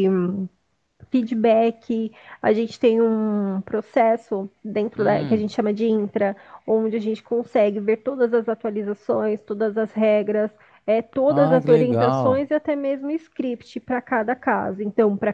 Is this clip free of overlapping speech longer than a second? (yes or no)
no